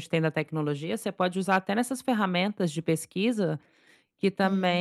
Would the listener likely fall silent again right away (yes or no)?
yes